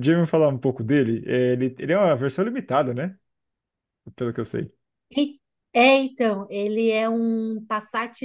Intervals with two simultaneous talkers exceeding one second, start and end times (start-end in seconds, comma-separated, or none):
none